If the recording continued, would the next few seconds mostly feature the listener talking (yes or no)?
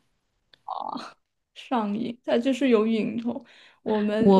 yes